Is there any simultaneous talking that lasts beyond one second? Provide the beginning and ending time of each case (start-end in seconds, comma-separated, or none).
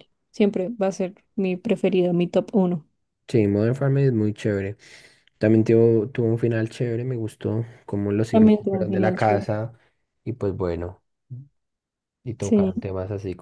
8.3-9.5